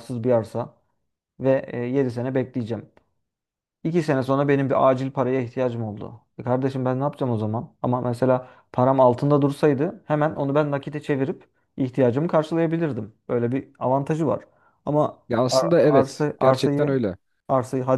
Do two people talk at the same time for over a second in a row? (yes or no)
yes